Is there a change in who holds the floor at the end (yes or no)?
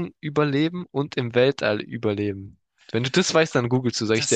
yes